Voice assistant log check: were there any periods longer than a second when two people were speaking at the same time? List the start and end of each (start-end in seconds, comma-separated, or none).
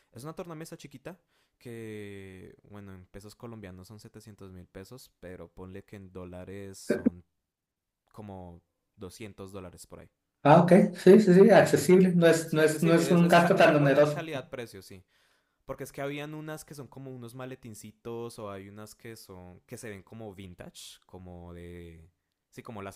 12.4-14.3